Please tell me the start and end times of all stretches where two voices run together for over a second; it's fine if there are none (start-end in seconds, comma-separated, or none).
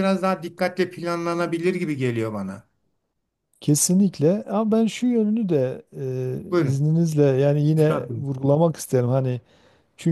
none